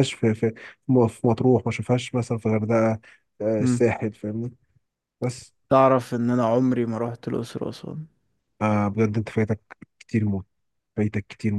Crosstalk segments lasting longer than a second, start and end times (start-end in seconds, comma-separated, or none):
none